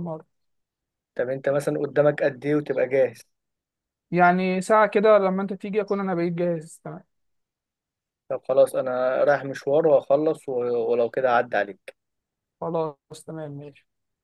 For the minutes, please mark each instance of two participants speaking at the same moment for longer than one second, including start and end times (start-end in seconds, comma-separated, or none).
none